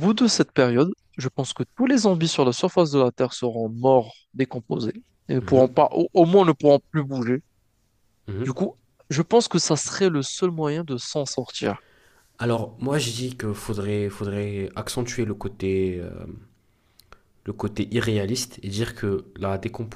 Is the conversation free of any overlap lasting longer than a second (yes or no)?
yes